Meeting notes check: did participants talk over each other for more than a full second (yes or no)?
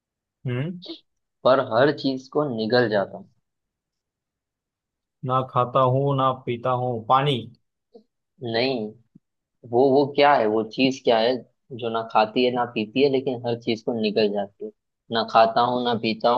no